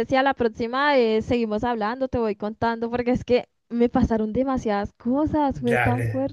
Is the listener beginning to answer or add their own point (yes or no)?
yes